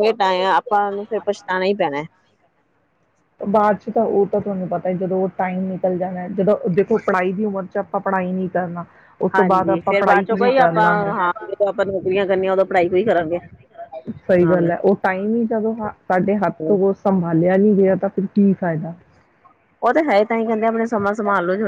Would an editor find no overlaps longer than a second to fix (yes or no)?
no